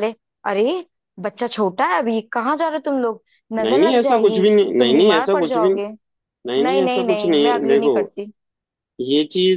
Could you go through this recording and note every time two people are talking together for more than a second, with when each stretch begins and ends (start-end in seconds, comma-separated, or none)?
3.6-5.8, 6.6-7.9